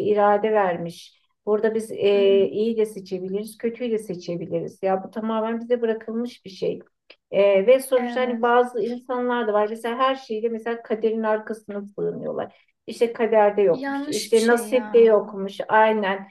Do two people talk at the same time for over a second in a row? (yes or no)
yes